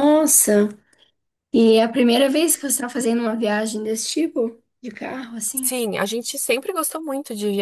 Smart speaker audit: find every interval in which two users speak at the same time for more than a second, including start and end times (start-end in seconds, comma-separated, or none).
none